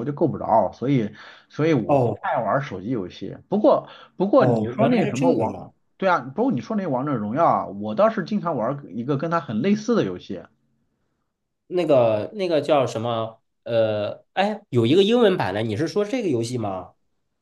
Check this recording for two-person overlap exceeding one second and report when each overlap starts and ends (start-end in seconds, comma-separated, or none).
4.4-5.6